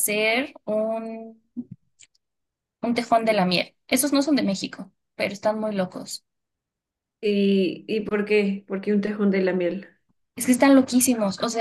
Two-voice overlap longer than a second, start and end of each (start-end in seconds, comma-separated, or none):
none